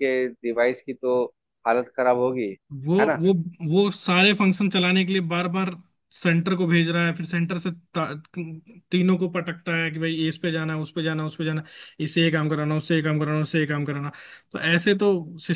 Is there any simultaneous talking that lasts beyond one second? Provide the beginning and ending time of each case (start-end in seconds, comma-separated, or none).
none